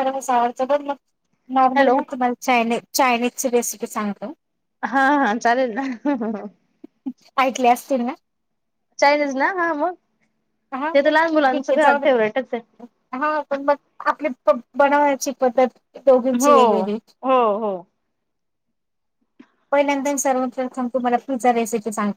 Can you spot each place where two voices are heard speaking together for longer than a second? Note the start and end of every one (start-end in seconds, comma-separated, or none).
10.9-12.8